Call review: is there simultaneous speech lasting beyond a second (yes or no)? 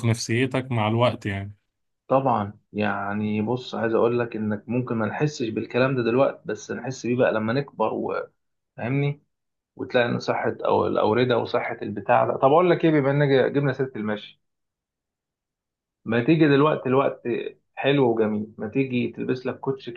no